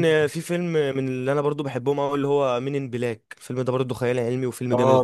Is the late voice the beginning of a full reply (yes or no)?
yes